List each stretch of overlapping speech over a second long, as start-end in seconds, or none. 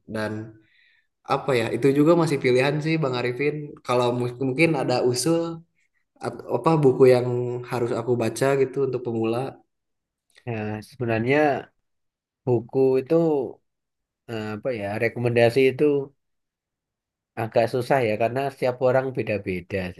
none